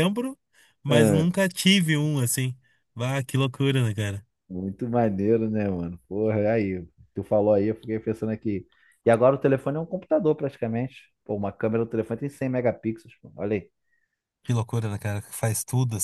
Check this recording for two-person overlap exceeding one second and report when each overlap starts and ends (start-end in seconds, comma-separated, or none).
none